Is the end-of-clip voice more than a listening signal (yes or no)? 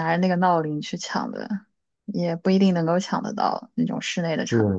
yes